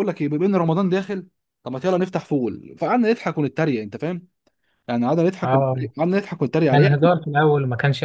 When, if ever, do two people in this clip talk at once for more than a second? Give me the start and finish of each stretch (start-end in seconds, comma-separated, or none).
none